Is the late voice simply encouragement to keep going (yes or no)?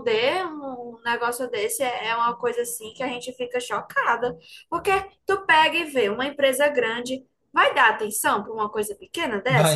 no